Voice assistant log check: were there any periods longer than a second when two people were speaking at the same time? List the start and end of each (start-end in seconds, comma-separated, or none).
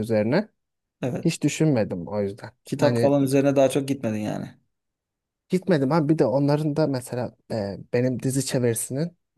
none